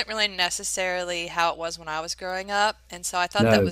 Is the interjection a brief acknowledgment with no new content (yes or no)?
yes